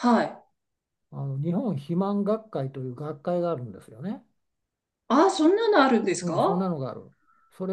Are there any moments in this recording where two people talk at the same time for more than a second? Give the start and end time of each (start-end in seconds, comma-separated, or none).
none